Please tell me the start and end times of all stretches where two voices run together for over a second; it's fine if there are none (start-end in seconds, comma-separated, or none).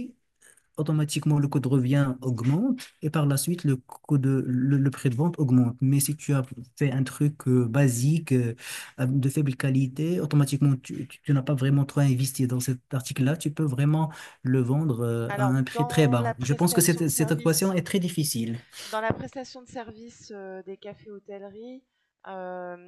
15.3-17.7